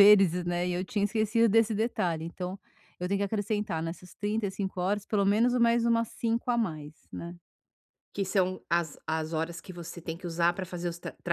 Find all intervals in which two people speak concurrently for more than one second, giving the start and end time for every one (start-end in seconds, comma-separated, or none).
none